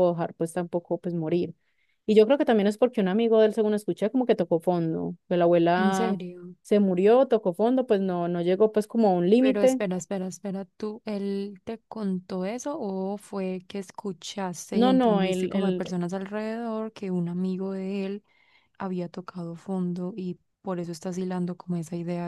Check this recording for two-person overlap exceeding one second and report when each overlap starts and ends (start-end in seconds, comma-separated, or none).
14.7-15.9